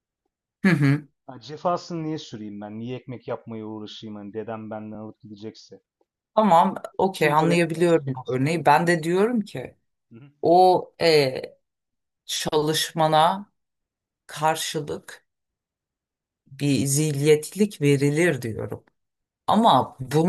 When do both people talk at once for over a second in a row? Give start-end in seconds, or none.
7.1-8.7